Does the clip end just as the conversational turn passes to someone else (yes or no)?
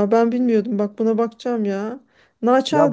yes